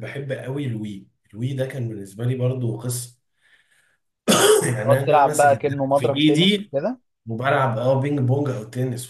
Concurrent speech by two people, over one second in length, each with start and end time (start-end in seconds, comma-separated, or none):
4.8-6.7